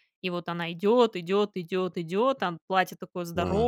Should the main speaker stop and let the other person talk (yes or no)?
yes